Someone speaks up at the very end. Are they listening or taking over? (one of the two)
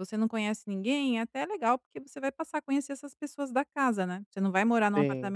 listening